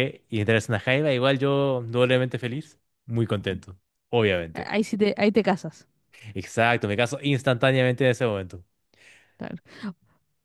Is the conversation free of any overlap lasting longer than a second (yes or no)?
yes